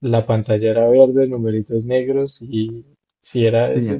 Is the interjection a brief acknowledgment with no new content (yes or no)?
yes